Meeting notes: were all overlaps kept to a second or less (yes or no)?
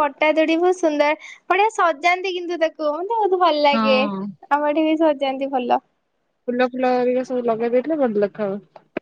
yes